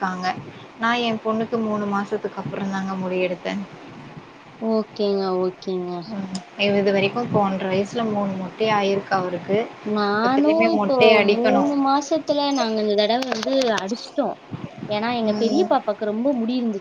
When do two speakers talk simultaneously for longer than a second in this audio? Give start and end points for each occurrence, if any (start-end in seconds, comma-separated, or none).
none